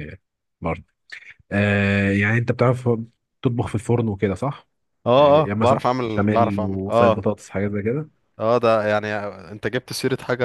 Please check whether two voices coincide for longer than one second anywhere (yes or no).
yes